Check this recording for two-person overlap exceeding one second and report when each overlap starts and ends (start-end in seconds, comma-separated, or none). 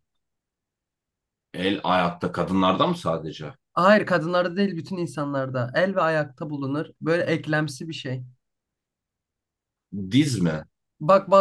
none